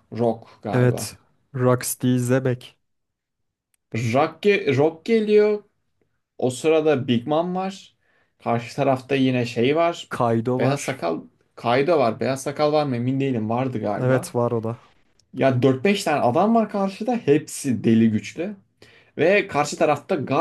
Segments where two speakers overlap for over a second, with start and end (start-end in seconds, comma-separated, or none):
none